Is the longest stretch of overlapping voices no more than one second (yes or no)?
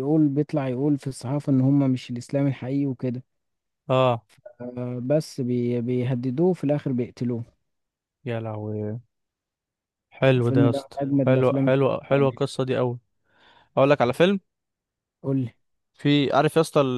no